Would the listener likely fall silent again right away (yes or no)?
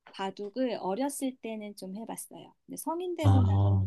yes